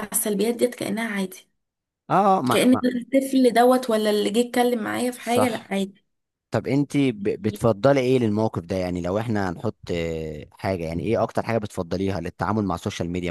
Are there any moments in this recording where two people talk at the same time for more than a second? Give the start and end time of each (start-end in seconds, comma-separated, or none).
none